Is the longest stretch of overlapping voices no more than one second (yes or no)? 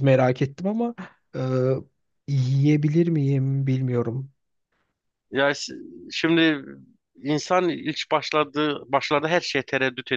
yes